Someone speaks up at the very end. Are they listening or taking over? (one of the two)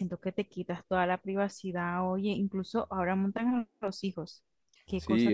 taking over